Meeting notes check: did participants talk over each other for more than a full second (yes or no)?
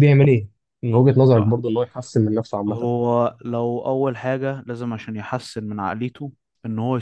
no